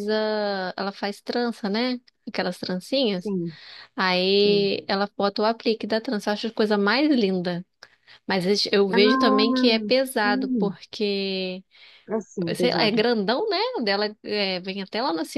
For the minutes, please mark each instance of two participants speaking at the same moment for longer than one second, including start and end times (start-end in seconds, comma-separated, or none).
8.9-10.8